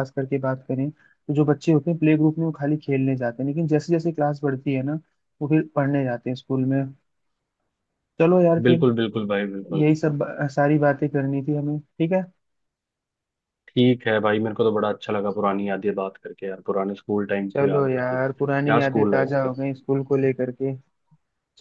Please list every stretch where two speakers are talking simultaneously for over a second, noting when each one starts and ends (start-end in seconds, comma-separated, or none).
17.5-19.5